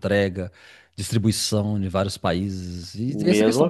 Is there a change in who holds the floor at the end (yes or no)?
yes